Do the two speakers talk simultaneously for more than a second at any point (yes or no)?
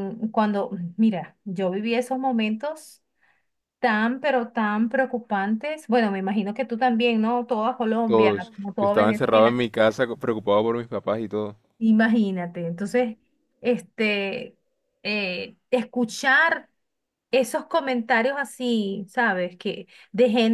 yes